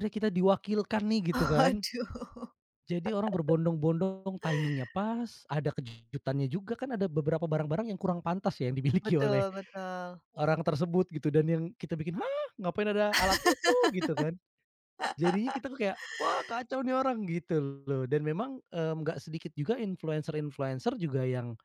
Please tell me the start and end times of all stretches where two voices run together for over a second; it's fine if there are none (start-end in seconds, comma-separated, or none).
none